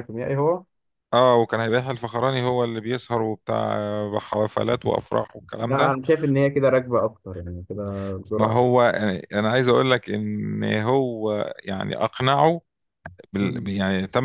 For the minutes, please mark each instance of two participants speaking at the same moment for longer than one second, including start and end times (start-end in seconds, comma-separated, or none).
none